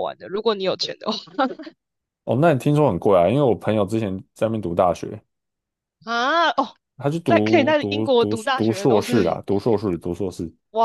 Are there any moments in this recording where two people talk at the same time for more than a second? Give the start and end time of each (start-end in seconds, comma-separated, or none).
7.2-9.4